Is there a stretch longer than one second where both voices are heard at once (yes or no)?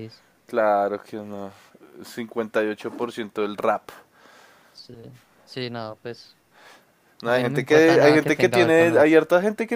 yes